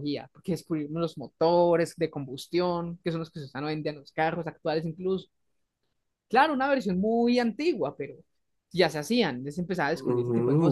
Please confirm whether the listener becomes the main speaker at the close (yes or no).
yes